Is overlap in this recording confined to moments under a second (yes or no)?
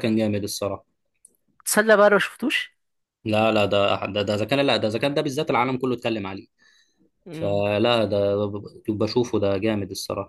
yes